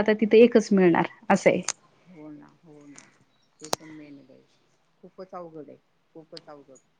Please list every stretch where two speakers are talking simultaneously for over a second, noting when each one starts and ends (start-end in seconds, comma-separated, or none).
none